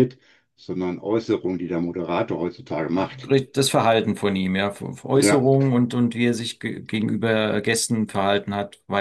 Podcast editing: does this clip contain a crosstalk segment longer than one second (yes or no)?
no